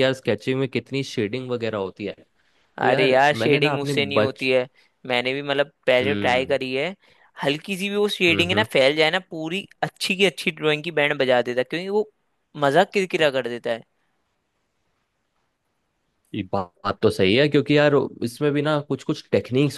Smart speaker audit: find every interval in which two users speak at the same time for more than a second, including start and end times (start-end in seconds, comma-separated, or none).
2.9-4.5